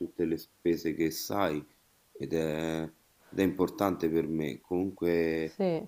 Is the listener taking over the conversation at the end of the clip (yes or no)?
no